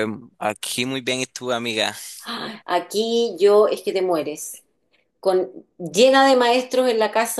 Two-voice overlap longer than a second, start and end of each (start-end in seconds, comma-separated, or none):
none